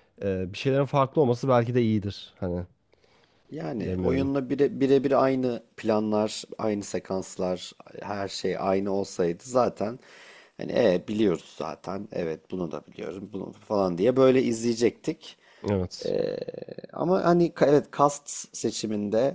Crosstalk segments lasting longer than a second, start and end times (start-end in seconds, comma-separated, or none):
none